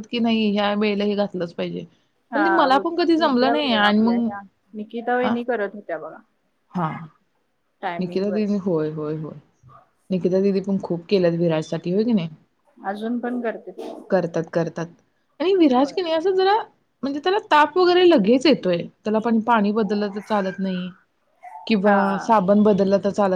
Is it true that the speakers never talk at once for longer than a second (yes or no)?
no